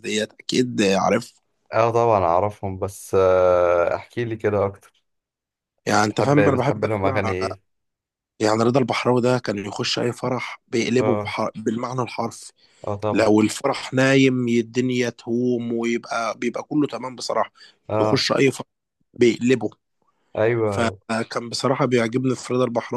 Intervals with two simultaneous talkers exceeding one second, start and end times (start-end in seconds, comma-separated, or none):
6.0-7.3